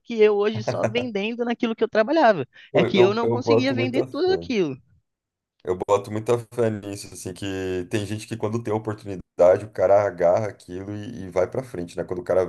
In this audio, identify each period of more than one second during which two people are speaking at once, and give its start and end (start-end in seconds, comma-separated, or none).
2.7-4.5